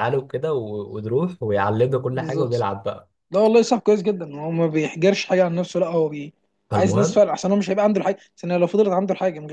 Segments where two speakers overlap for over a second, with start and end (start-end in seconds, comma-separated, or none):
none